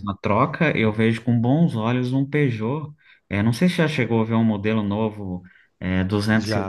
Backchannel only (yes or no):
no